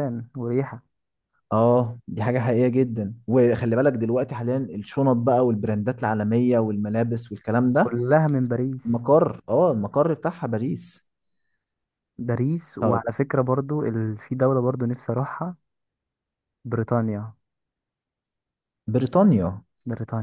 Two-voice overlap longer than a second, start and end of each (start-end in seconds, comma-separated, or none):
none